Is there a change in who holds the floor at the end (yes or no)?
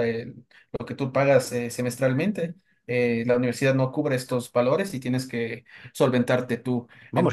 yes